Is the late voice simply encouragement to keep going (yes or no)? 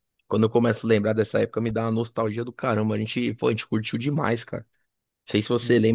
yes